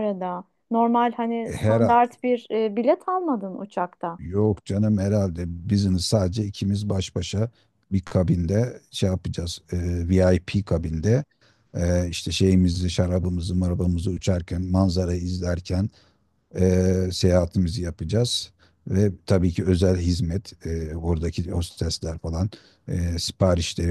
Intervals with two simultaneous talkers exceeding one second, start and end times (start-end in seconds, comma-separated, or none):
none